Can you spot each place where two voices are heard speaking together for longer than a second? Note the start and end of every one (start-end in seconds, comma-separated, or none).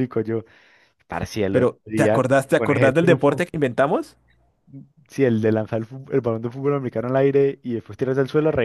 1.5-3.4